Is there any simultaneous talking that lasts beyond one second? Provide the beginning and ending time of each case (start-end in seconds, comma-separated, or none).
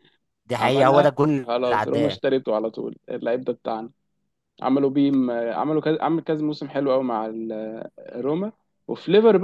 0.6-2.2